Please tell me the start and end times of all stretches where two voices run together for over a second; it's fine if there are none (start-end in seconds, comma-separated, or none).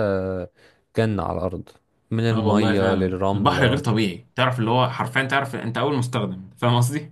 2.3-3.8